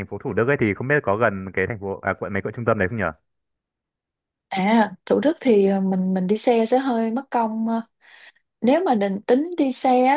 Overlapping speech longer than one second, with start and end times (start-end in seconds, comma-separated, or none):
none